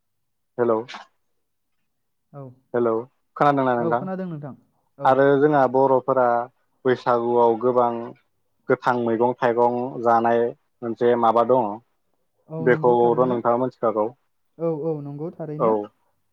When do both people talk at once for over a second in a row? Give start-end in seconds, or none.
12.7-14.1